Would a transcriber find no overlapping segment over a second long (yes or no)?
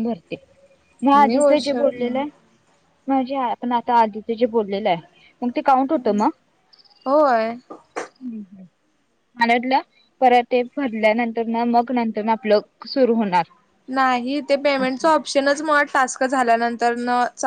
yes